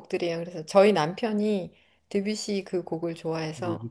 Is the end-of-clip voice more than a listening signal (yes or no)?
yes